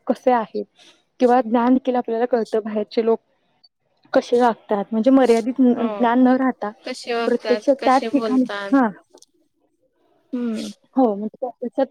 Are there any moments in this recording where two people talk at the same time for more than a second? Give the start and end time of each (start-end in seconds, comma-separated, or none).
6.8-8.7